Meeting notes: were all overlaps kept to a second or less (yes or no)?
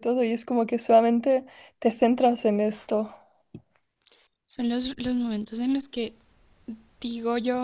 yes